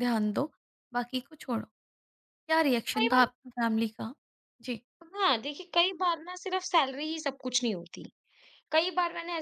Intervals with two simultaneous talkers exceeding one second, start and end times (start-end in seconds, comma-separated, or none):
none